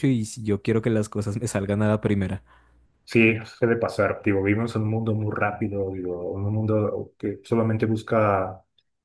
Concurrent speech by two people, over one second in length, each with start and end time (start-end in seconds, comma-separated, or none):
none